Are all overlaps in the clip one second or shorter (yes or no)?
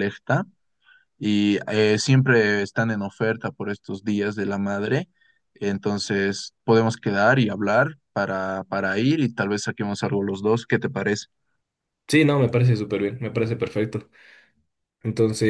yes